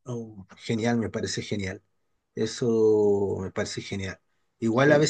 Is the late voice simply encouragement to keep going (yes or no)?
yes